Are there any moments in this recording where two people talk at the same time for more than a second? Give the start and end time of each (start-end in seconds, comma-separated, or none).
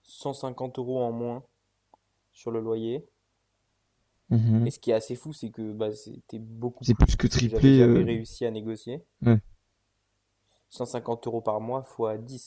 6.8-8.1